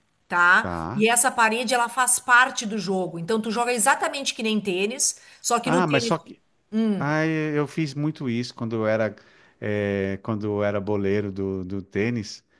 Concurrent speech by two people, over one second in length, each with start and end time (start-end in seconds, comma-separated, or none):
none